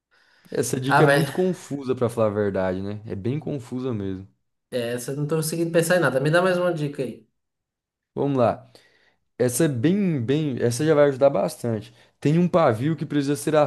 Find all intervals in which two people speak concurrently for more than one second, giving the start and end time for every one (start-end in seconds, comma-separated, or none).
none